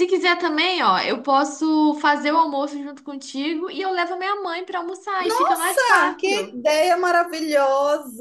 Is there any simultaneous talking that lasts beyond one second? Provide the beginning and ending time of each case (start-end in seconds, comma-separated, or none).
5.2-6.6